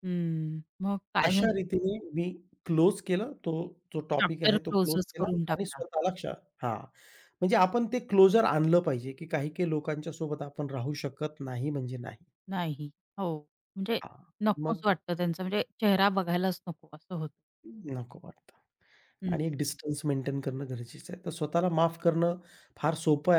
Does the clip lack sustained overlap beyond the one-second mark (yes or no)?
no